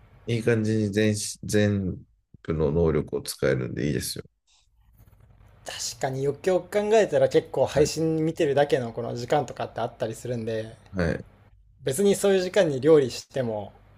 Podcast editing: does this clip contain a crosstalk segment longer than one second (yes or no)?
no